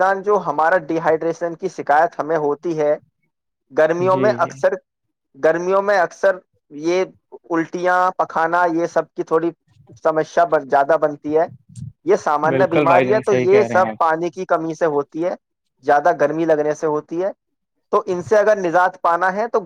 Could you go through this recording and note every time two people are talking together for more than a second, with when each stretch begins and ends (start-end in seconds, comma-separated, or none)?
12.5-14.1